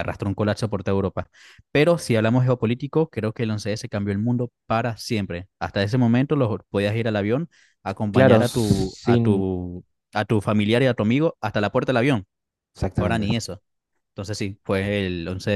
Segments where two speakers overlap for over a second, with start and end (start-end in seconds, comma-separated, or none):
8.1-9.4